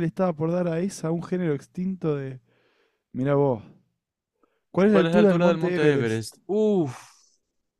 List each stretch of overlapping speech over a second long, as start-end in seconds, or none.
4.9-6.2